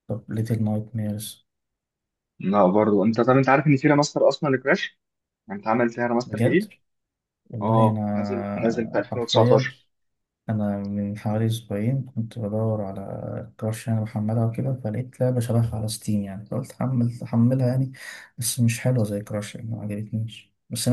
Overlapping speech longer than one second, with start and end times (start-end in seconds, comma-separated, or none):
7.6-9.7